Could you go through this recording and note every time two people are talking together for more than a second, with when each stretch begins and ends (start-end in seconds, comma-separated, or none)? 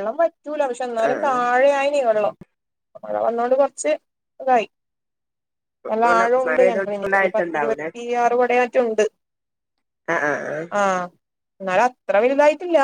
6.1-7.9